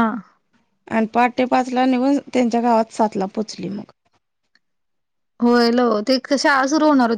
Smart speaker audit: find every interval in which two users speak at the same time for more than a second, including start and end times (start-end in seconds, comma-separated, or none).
none